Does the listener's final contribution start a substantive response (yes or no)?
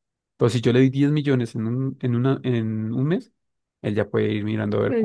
yes